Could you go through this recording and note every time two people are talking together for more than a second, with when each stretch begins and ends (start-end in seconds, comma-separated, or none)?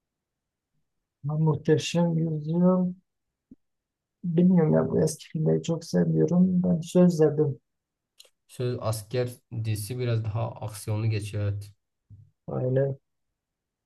none